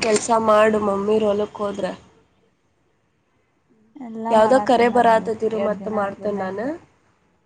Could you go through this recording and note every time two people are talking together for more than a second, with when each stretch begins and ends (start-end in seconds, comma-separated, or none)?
4.3-6.7